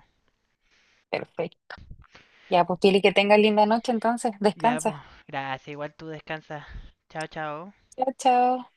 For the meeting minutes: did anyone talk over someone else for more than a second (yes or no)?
no